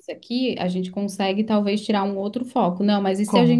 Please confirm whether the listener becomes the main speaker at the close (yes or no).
no